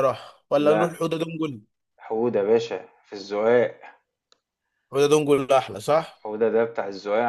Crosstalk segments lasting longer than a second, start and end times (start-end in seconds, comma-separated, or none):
none